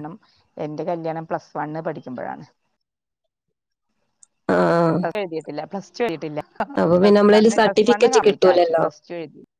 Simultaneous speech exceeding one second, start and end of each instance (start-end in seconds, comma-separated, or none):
6.8-8.8